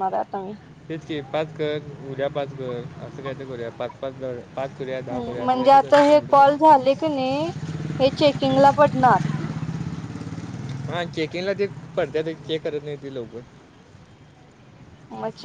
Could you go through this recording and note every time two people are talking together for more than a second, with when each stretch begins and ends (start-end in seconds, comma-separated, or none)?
none